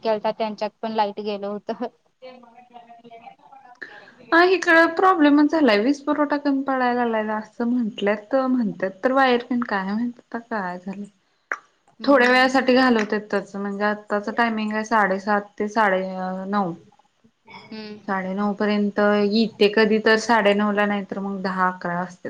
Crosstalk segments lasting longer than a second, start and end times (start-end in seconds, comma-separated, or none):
none